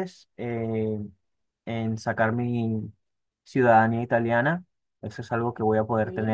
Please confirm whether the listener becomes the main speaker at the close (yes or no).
no